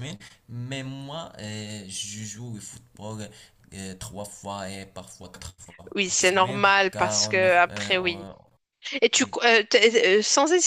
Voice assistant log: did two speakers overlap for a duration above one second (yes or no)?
yes